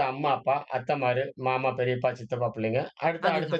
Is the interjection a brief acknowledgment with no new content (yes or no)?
yes